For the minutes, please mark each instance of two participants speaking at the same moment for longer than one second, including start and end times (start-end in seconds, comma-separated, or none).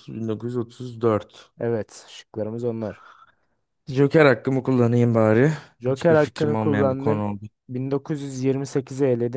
5.9-7.3